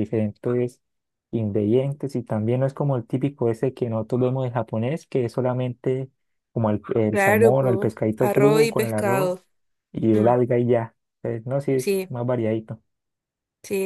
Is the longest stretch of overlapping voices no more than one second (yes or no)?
no